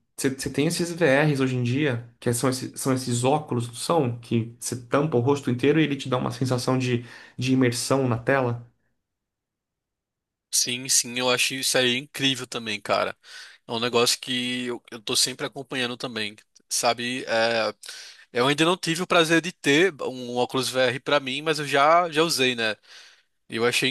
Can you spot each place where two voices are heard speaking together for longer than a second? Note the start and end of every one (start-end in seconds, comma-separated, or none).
none